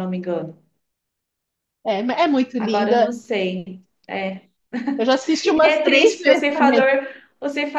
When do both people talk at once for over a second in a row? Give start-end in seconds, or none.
5.6-6.9